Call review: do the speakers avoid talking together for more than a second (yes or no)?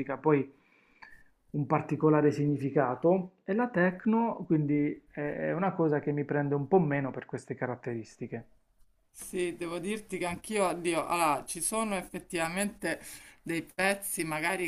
yes